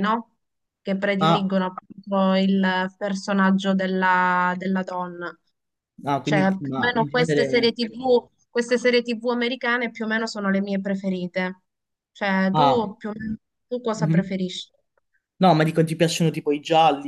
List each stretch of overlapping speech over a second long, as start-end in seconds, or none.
6.2-7.7